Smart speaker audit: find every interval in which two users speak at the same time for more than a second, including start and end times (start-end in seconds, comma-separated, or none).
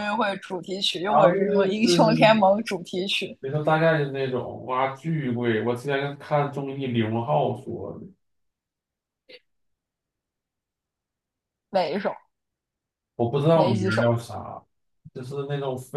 1.1-2.4